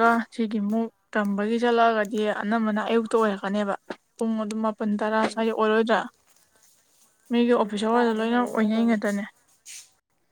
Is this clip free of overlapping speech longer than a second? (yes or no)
no